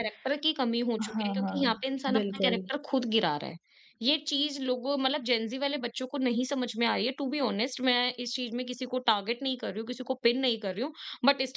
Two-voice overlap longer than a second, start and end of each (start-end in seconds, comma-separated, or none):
1.1-2.6